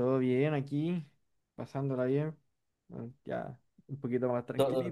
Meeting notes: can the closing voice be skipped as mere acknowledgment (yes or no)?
no